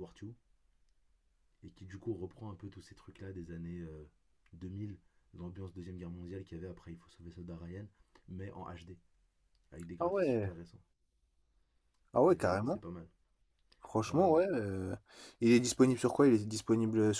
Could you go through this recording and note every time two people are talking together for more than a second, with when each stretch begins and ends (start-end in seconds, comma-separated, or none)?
none